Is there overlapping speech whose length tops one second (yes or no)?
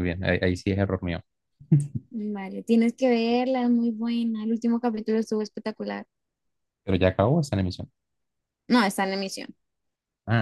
no